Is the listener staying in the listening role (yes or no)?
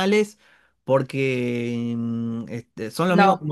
yes